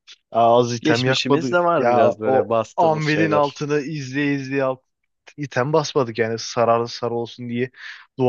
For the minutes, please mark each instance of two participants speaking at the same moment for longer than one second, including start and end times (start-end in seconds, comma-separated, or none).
0.8-3.6